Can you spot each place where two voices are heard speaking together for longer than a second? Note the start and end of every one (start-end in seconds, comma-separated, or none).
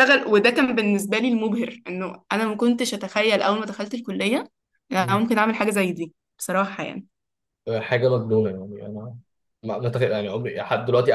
none